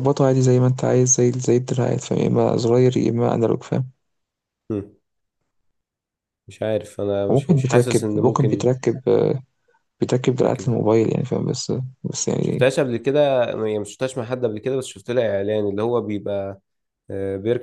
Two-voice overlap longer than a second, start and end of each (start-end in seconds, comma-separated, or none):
7.3-8.8